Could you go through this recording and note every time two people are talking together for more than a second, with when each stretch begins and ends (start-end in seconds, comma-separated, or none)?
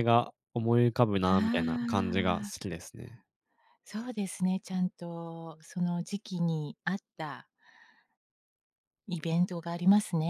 1.2-2.7